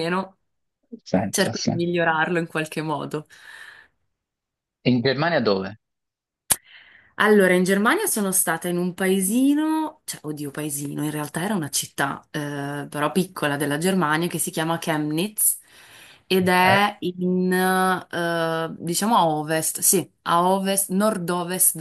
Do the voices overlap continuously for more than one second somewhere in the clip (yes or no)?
no